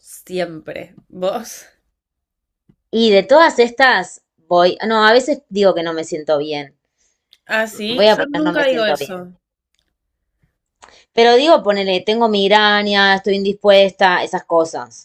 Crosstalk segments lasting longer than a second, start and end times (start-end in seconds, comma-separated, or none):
7.9-9.2